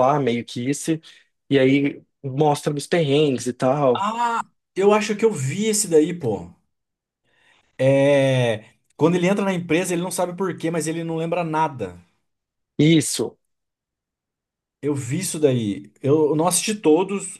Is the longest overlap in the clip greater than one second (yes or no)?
no